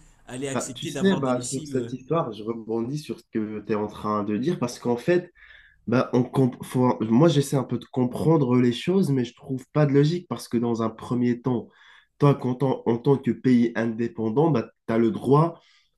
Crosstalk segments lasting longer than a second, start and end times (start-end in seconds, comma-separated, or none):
0.5-2.0